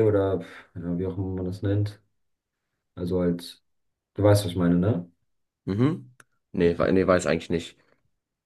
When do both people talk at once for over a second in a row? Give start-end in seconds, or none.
none